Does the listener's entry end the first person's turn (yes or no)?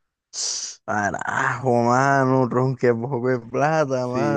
yes